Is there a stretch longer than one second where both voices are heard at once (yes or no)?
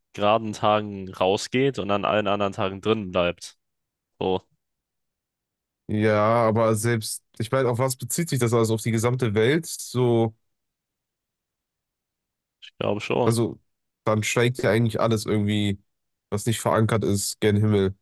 no